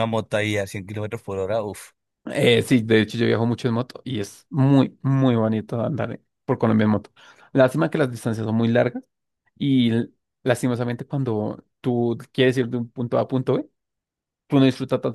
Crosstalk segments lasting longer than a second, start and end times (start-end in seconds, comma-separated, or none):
none